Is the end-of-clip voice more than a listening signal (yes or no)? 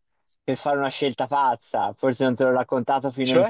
no